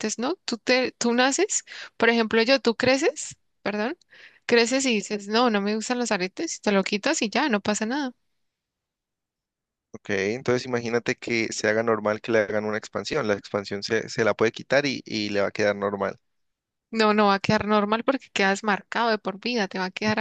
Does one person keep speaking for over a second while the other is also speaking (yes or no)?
no